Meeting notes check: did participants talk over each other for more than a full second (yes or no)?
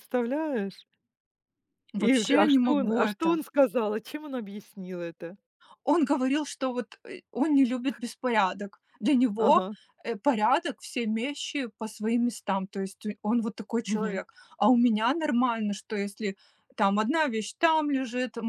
yes